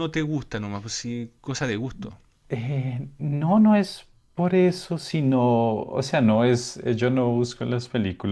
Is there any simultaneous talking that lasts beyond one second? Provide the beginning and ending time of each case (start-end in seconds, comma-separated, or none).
none